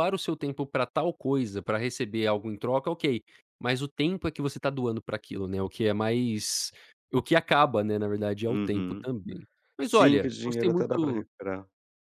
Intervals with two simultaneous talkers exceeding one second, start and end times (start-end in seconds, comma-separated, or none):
9.8-11.2